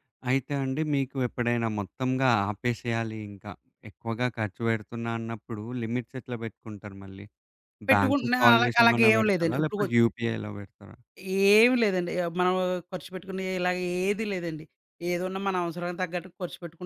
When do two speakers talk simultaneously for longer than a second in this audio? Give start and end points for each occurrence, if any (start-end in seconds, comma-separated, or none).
7.9-9.9